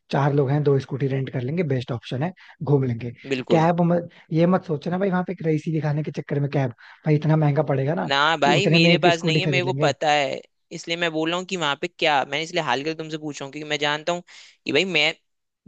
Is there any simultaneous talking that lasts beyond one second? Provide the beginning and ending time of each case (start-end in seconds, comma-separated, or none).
8.1-9.9